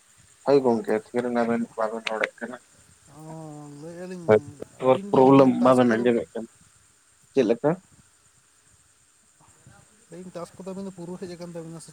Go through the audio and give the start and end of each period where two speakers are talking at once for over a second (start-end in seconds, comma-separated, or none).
4.3-6.1